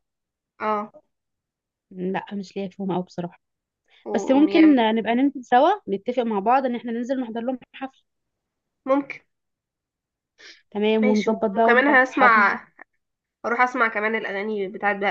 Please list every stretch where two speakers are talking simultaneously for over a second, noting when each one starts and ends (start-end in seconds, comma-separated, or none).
11.0-12.6